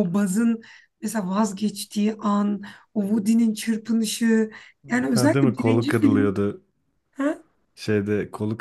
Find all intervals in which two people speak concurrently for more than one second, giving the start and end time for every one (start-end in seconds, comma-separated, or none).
5.1-6.4